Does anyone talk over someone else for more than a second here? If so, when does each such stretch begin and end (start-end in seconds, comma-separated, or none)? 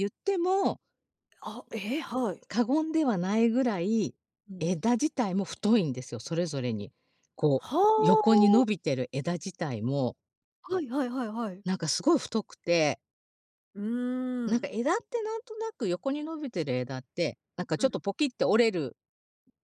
none